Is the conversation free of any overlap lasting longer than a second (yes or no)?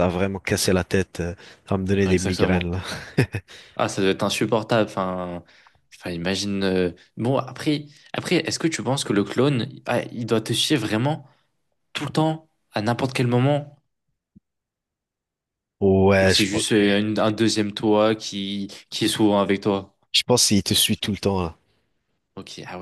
yes